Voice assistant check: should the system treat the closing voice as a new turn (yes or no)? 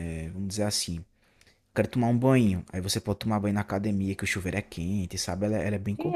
yes